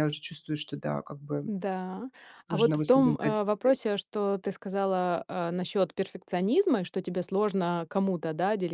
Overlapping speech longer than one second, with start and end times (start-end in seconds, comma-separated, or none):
2.5-3.7